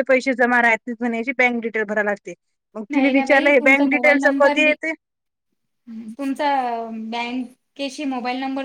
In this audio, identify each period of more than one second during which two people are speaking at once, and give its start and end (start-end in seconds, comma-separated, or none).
2.9-4.7